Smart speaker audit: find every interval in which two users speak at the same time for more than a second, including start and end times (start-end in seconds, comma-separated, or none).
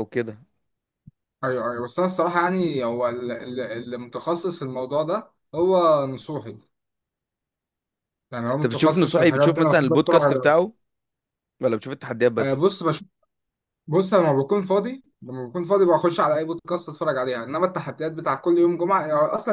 8.5-10.5